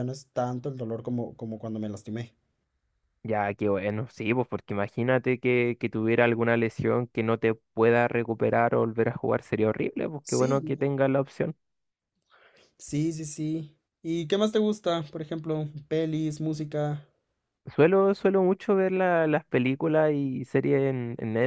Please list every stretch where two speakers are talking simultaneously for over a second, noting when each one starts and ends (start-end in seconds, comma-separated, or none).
none